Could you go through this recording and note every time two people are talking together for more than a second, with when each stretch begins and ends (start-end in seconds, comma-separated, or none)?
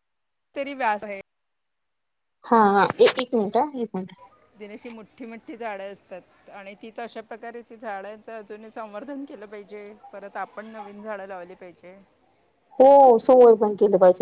none